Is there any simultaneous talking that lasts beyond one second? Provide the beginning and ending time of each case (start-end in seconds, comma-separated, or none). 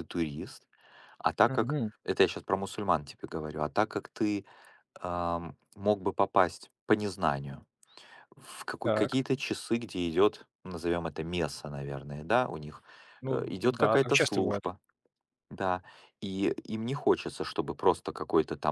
13.3-14.6